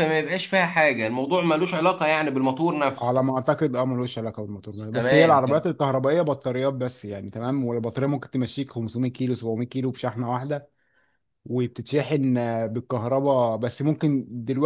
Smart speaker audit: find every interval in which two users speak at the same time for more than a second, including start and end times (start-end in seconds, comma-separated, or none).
none